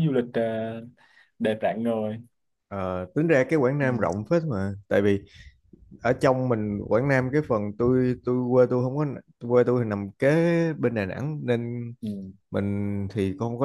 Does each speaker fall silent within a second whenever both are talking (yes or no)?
yes